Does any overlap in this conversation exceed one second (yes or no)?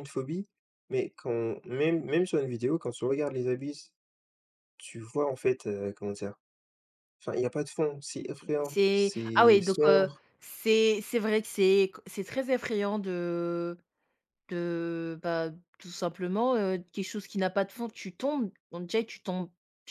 yes